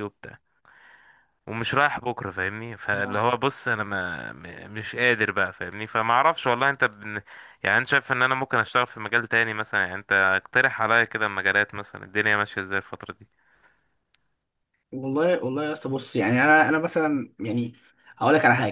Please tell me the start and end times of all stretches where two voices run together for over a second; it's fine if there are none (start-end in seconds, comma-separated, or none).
none